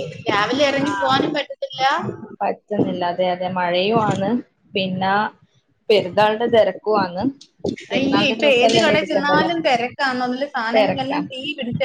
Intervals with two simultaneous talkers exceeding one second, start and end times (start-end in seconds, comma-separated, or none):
7.9-9.5